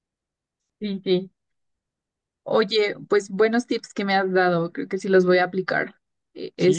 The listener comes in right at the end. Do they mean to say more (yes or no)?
yes